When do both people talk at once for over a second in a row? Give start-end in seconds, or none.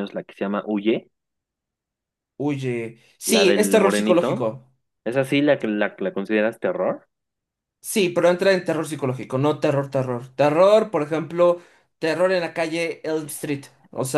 3.2-4.5